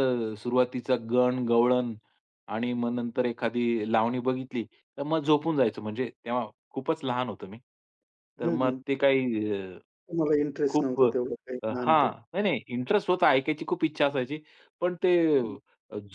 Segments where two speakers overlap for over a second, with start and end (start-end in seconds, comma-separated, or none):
10.7-12.1